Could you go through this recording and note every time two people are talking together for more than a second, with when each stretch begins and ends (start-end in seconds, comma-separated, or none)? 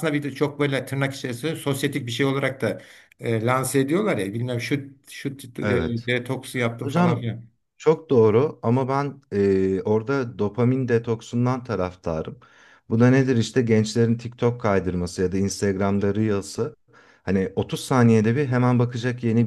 none